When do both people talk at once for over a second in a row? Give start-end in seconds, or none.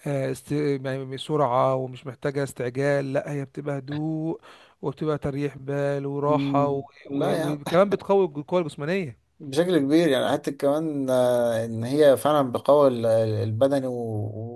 6.2-7.6